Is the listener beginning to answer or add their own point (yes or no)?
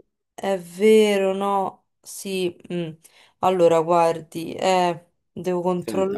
yes